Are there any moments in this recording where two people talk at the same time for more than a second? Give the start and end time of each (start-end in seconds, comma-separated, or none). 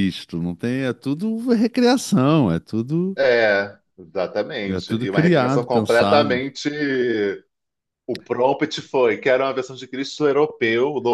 4.7-6.4